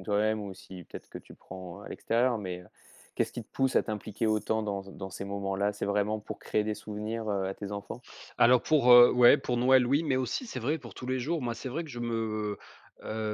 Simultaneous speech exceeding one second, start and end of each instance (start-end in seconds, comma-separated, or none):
none